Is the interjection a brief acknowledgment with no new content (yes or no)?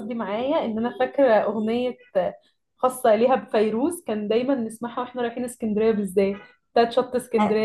yes